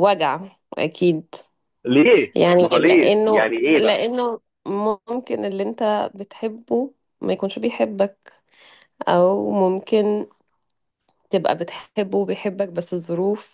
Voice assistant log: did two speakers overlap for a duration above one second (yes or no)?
yes